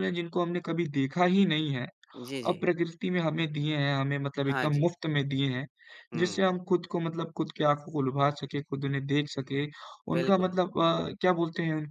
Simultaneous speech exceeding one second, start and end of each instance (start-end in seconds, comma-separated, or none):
none